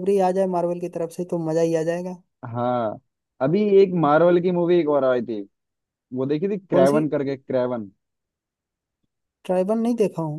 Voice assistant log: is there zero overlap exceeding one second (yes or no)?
yes